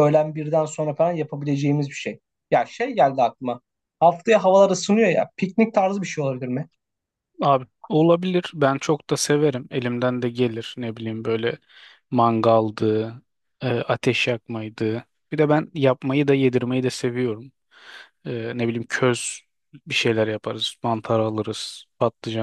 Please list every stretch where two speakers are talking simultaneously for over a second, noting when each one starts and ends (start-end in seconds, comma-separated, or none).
none